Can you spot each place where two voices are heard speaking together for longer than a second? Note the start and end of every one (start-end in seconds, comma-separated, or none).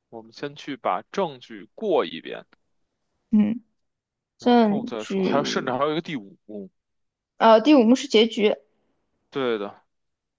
4.4-5.7